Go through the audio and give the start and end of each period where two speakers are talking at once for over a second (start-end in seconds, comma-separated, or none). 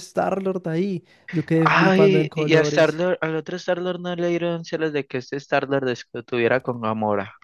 1.6-3.0